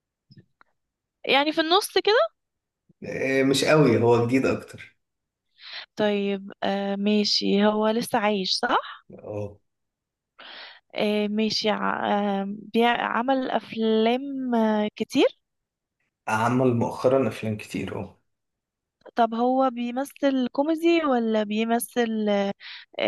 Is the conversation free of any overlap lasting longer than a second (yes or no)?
yes